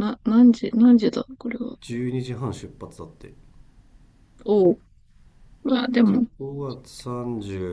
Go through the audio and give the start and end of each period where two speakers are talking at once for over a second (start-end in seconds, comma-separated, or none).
none